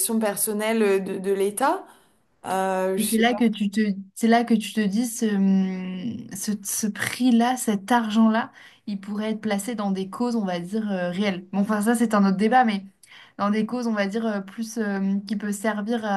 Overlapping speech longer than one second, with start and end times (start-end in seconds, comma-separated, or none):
none